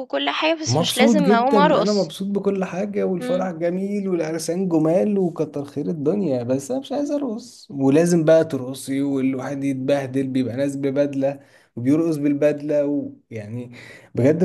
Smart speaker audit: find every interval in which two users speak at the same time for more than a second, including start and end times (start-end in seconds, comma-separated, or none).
0.7-2.1